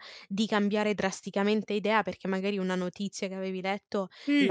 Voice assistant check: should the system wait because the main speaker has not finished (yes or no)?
yes